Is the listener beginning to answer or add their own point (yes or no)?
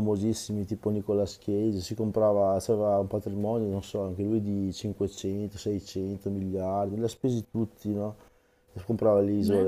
no